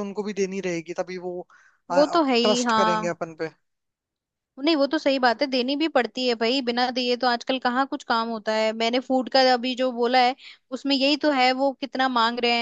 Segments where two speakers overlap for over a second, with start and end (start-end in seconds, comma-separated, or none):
1.9-3.1